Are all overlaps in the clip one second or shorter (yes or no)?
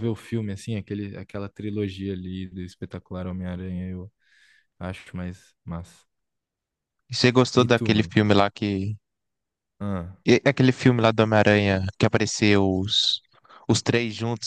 yes